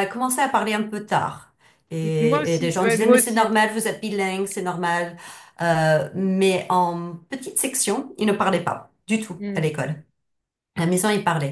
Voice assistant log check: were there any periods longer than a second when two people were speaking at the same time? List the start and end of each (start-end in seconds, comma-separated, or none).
2.0-3.5